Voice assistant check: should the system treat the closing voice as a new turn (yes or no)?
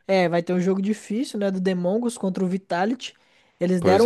no